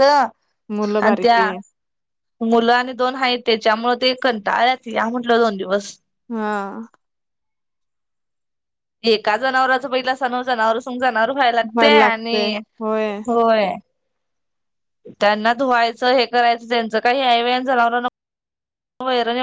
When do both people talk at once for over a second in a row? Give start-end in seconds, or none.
none